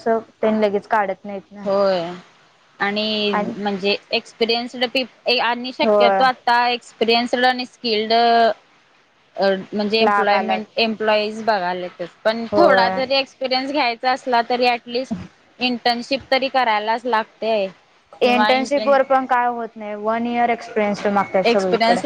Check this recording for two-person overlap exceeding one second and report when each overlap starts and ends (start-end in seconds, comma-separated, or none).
none